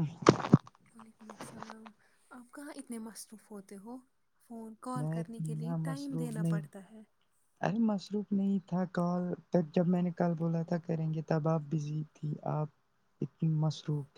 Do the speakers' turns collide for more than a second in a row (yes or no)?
yes